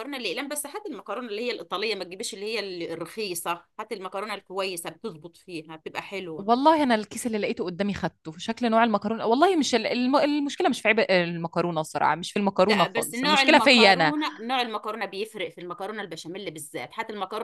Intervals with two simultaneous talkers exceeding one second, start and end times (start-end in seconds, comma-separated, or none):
12.7-14.1